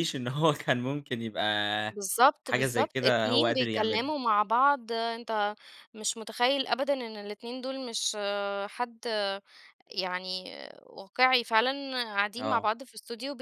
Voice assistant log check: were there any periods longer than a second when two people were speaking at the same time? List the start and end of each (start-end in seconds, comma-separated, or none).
2.4-4.2